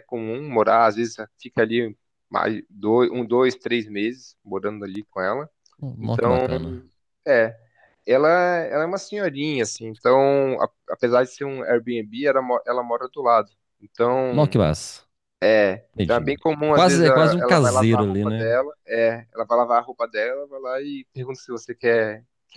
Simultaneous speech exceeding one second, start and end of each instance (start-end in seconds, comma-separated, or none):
15.9-18.4